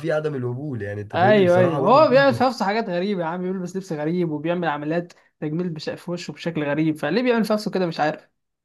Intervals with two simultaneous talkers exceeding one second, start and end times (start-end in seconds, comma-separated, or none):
1.1-2.5